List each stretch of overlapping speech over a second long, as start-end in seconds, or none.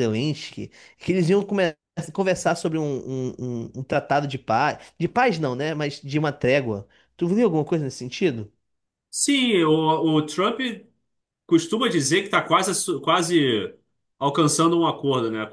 none